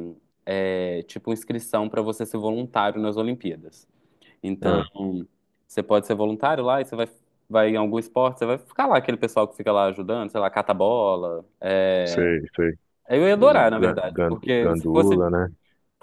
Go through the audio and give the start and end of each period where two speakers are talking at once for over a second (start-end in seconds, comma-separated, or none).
13.4-15.3